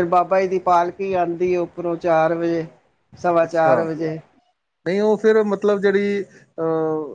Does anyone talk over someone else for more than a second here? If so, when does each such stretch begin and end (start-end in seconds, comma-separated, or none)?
none